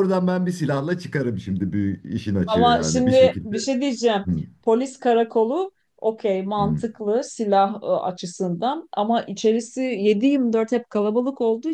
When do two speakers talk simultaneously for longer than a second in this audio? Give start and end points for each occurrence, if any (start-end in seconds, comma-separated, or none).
2.5-3.7